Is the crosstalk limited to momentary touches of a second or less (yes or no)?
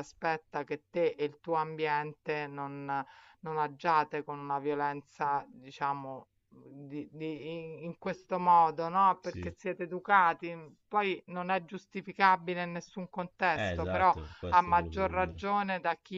no